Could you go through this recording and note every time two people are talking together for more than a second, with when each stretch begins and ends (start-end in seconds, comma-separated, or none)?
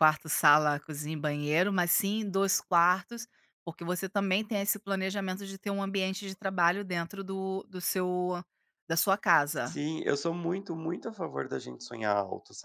none